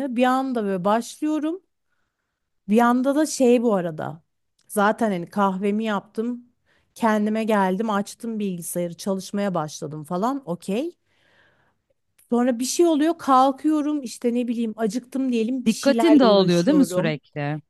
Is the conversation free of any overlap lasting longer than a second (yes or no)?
no